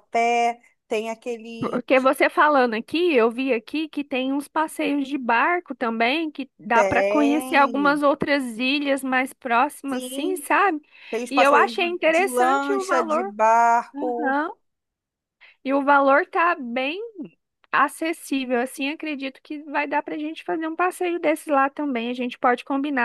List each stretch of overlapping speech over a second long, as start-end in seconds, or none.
6.7-8.0, 11.3-13.3